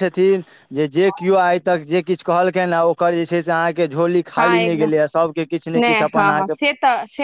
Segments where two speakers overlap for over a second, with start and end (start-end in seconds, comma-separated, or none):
none